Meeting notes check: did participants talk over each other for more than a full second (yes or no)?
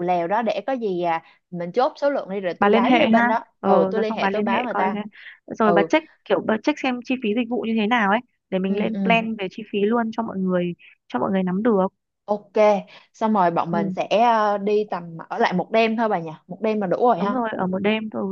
yes